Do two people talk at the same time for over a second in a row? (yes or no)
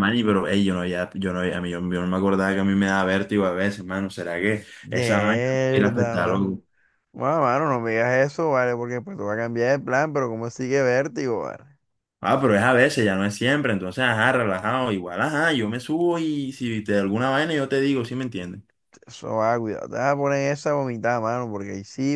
yes